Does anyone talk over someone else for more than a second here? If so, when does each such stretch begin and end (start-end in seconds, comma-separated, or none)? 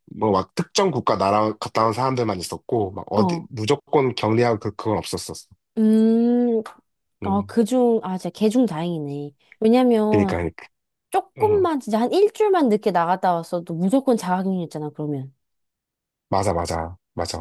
none